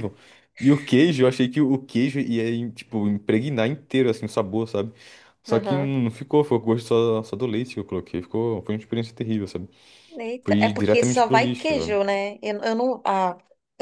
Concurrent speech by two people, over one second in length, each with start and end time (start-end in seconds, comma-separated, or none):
10.4-12.0